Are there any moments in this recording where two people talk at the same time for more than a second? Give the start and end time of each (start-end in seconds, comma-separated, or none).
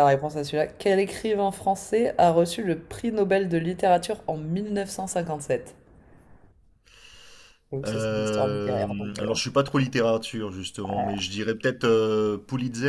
7.8-9.4